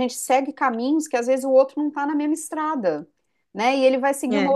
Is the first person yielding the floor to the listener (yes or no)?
no